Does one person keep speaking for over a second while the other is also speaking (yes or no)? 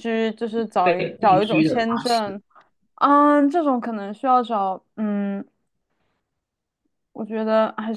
yes